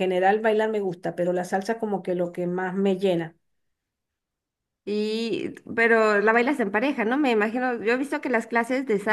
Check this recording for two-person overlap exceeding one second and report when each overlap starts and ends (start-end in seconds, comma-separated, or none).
none